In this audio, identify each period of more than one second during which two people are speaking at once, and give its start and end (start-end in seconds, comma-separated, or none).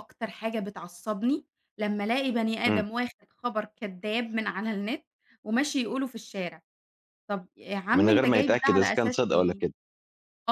8.0-9.6